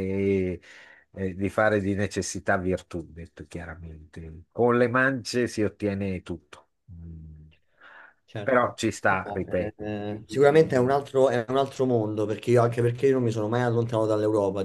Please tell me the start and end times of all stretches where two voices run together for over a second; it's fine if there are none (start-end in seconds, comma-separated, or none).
8.4-10.9